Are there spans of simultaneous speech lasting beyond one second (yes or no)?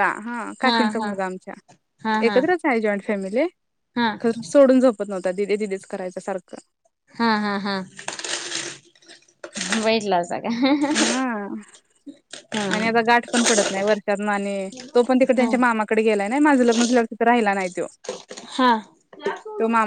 no